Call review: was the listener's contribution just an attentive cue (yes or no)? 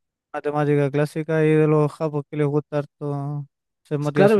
no